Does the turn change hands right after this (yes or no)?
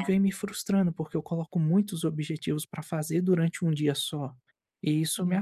yes